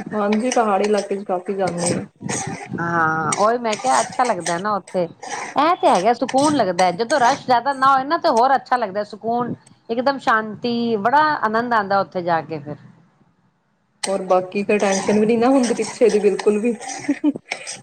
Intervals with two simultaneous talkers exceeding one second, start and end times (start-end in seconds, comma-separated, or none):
none